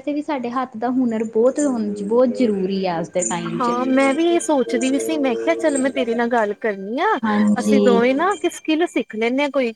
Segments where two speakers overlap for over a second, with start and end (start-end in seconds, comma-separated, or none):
none